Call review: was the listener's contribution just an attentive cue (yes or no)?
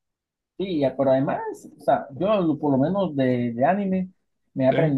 yes